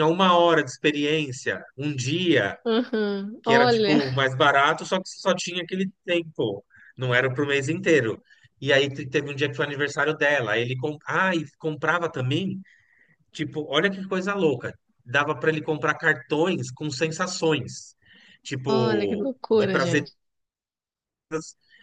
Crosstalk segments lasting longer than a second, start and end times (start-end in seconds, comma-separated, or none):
18.6-20.1